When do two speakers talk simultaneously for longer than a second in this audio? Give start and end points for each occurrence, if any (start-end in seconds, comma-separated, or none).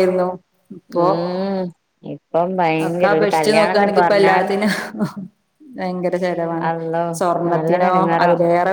none